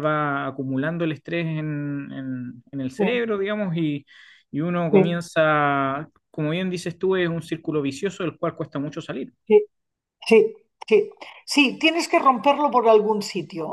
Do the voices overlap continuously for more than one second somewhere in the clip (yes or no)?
no